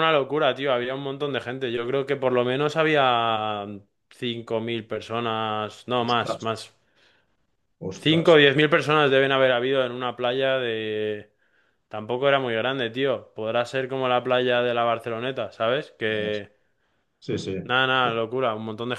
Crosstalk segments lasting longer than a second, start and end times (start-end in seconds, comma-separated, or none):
none